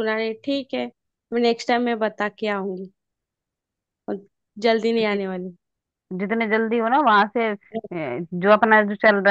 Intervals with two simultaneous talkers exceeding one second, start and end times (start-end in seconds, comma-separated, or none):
none